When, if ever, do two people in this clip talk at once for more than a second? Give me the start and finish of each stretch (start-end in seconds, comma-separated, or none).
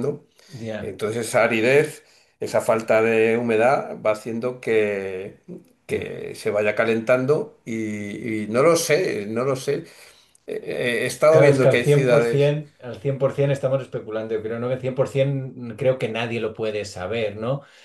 11.3-12.5